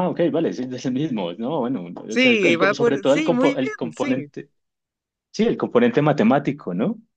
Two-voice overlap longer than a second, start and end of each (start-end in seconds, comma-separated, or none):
2.1-4.3